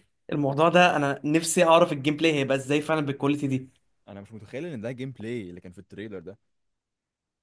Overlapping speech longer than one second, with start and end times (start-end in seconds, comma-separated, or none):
none